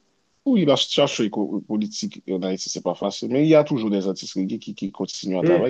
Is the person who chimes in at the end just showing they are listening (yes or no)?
no